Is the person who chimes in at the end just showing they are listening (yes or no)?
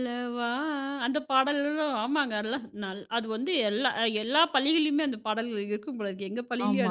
no